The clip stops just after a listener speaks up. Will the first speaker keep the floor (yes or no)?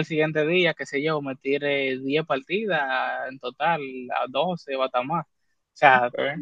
yes